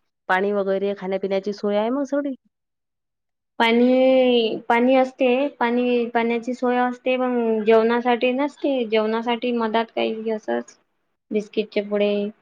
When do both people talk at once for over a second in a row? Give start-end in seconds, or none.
none